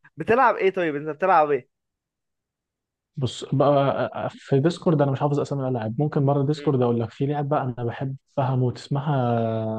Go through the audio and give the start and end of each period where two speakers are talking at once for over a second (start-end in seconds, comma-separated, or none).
none